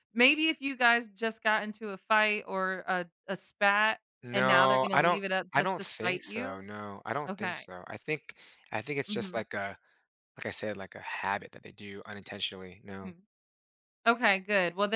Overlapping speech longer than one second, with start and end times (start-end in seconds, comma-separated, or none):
4.2-6.7